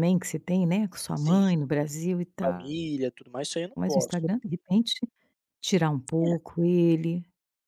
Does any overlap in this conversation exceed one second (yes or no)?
no